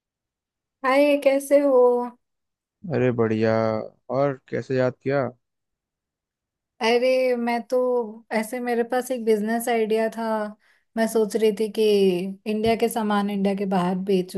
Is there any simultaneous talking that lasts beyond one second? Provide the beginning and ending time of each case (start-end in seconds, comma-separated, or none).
none